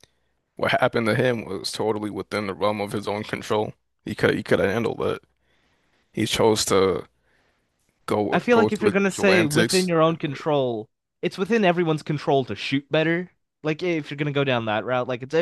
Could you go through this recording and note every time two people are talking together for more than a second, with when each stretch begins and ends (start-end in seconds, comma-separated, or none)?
8.3-10.4